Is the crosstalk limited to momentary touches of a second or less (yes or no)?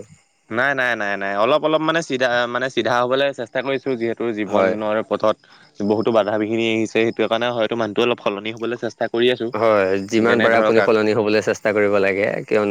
yes